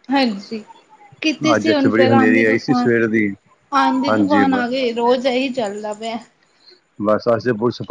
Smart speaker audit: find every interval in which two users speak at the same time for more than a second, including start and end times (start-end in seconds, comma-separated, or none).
1.5-2.9